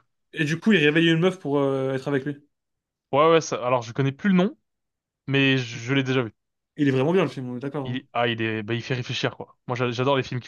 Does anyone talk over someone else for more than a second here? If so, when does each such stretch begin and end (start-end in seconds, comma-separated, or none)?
none